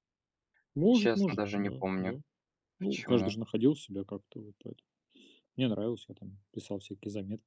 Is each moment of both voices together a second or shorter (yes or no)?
no